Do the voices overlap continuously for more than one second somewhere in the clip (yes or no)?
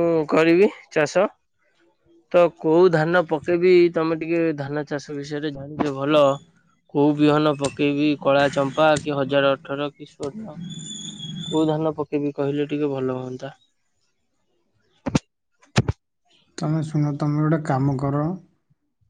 no